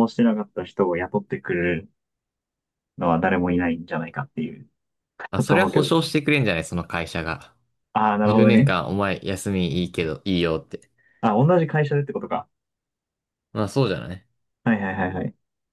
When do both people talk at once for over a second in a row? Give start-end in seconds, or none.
none